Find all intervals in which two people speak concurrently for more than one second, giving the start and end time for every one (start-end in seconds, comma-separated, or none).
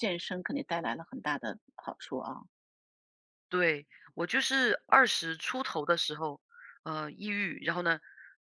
none